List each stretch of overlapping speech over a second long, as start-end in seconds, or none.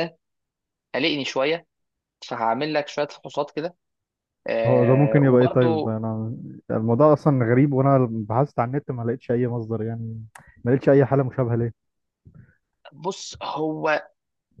4.7-6.0